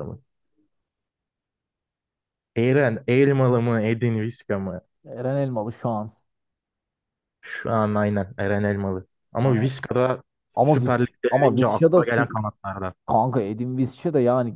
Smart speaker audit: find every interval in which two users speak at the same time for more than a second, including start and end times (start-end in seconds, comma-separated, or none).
10.6-12.4